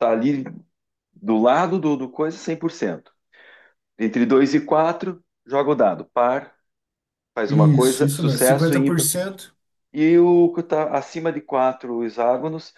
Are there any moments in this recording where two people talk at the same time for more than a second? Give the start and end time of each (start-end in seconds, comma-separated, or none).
7.5-9.1